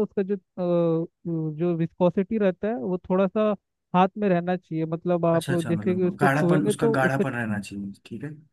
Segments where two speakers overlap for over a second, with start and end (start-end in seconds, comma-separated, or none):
5.3-7.2